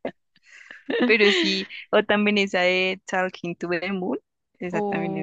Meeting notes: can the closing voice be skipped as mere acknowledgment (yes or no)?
no